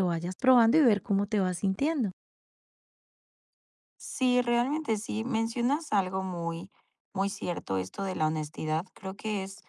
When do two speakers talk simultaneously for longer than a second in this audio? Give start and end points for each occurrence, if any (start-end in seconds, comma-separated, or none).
none